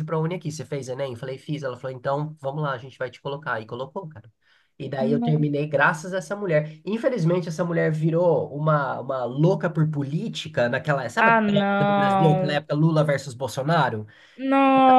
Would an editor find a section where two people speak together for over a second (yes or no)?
yes